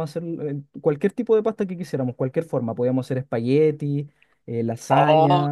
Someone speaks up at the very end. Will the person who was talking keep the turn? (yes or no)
no